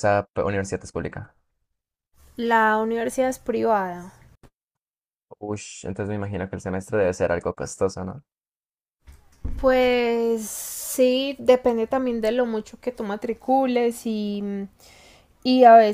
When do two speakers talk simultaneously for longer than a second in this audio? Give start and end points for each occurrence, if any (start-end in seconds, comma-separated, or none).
none